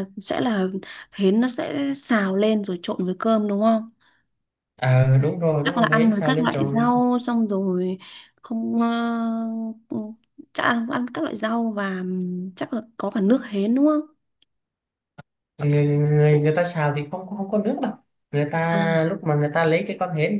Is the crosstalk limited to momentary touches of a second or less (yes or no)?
no